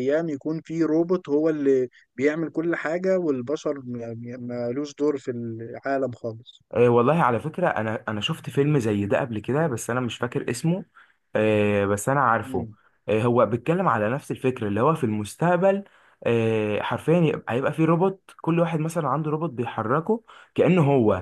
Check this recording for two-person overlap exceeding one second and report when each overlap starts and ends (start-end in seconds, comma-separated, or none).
none